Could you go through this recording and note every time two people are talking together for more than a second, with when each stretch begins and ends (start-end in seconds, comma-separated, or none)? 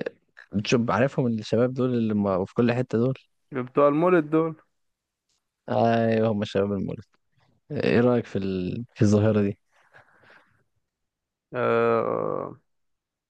none